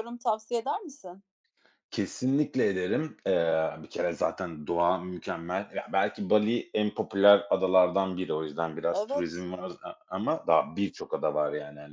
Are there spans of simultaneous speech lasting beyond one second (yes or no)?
no